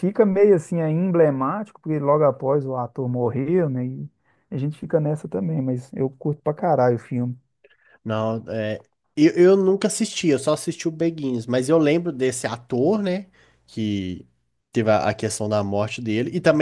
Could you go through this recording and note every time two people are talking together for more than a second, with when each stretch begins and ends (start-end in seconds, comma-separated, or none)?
none